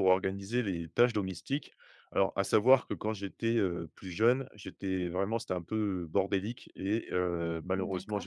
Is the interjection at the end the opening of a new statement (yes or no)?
no